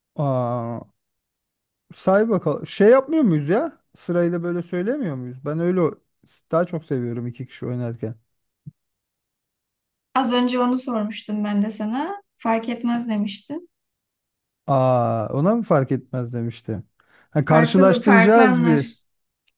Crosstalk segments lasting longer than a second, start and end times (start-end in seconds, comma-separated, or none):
17.5-18.8